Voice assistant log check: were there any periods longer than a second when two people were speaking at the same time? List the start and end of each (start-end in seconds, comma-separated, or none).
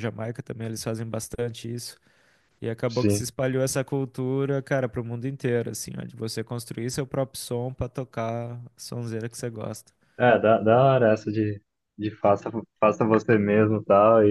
none